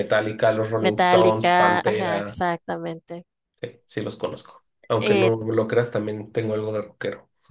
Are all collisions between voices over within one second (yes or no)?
no